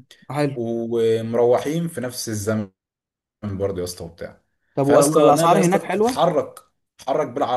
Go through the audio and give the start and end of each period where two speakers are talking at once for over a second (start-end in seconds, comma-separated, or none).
4.8-6.2